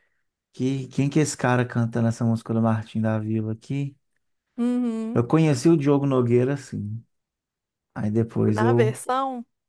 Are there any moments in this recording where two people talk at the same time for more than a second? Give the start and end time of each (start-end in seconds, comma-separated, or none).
none